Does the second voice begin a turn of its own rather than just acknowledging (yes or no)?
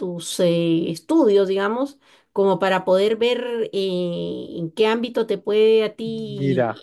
yes